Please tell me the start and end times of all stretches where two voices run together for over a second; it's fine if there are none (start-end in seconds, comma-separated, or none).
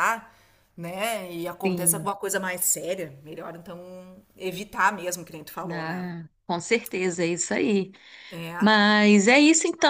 none